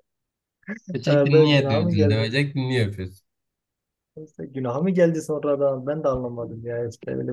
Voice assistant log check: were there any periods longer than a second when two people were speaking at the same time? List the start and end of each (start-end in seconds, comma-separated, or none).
1.1-2.3